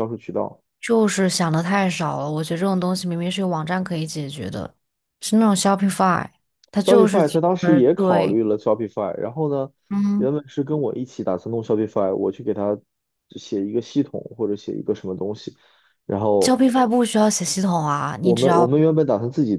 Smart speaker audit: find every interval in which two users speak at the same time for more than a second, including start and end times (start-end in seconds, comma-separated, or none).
6.8-8.4